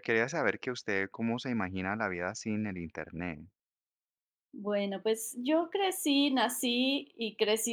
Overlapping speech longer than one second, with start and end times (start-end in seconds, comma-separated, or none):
none